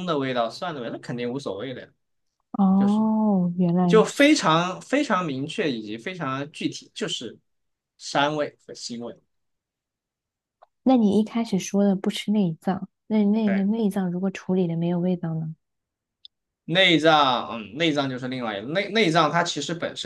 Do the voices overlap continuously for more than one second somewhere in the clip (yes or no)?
no